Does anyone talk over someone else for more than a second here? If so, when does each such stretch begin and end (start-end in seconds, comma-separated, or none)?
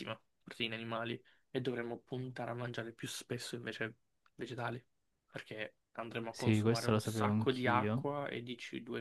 6.3-8.0